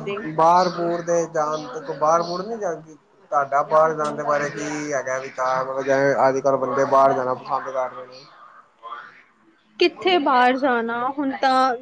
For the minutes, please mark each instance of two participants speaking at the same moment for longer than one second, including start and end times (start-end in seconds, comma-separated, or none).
none